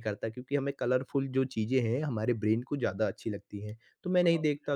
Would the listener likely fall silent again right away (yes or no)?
yes